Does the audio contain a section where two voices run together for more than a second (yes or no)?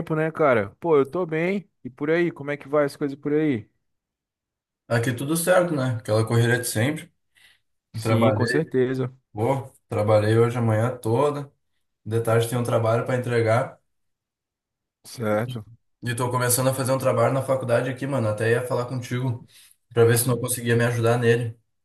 no